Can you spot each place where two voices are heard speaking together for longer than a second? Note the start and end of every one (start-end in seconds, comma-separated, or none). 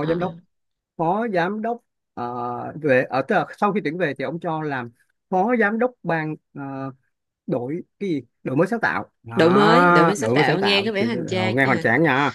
9.3-11.8